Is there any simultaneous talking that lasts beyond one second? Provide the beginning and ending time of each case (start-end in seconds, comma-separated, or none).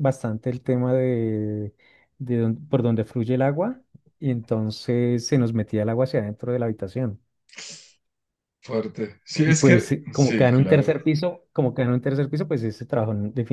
9.4-10.9